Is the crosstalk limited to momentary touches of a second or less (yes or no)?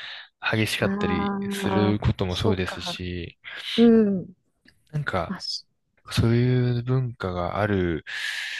no